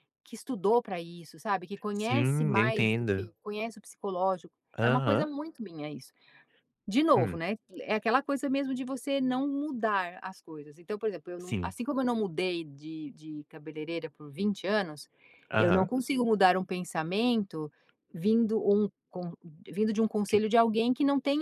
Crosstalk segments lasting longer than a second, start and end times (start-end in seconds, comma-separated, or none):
1.9-3.3